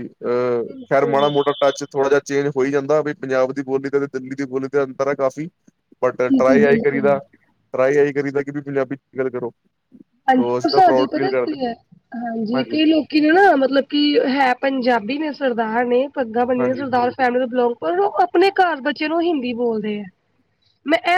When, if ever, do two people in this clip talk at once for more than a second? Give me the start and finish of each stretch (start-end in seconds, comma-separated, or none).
10.3-11.6